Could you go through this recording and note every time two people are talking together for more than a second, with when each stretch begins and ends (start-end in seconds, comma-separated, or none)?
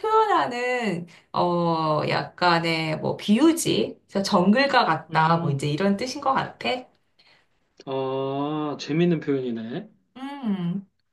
none